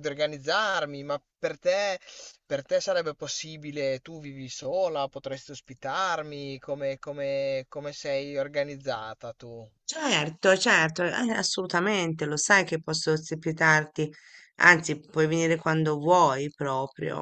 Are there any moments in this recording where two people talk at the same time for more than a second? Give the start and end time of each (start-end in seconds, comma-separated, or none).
none